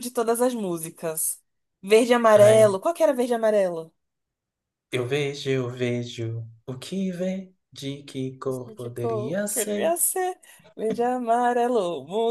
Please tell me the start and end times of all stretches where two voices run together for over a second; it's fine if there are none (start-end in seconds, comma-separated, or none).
8.8-10.0